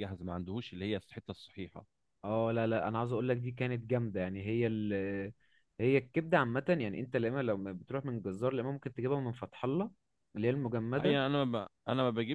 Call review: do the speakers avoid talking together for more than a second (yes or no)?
yes